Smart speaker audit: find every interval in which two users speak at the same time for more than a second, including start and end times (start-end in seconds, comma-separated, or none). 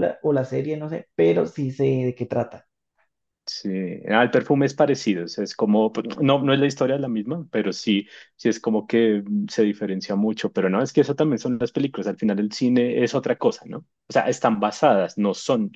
none